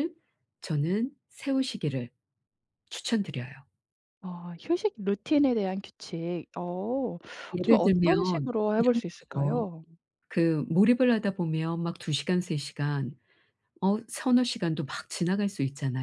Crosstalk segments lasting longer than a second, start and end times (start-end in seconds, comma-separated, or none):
7.6-9.7